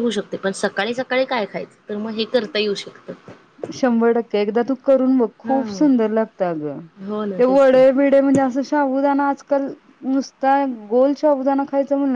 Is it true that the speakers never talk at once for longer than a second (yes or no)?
yes